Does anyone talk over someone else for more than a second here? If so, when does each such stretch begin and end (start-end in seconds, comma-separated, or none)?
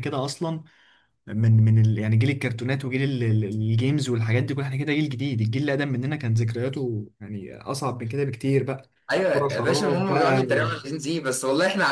9.3-10.7